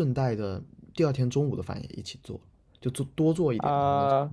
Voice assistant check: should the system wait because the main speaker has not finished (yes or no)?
no